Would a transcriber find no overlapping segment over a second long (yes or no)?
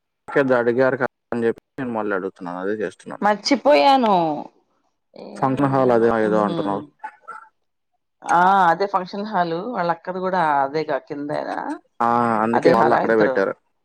yes